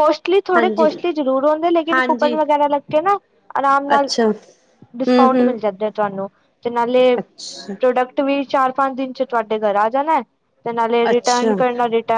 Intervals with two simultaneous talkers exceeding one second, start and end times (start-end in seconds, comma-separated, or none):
none